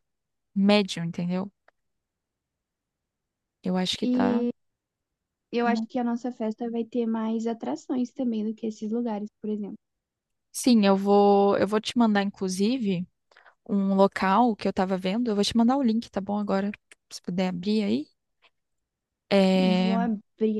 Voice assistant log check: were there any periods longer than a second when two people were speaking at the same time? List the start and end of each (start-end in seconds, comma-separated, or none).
none